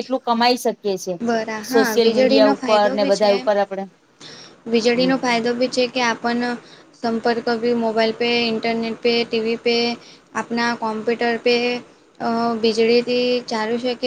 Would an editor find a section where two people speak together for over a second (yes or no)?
yes